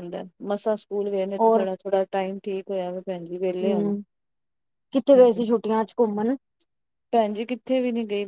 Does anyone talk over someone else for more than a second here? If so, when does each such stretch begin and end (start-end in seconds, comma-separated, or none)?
none